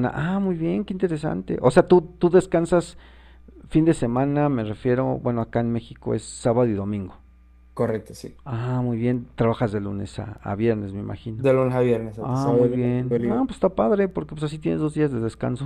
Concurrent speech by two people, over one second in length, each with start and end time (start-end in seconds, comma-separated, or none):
12.2-13.4